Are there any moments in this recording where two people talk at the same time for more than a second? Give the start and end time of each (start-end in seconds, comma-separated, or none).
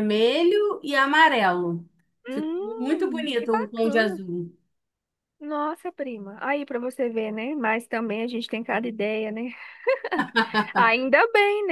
2.3-4.2